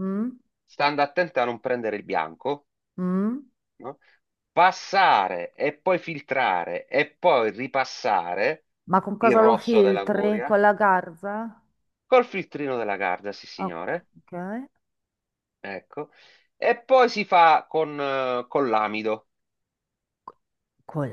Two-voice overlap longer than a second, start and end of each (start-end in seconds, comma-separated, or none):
9.2-10.6